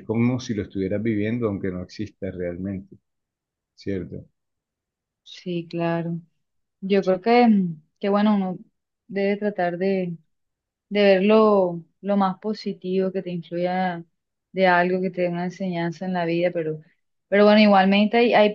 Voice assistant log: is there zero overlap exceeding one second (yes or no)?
yes